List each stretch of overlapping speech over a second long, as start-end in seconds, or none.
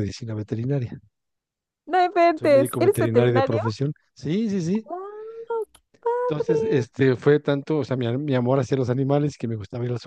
2.4-3.6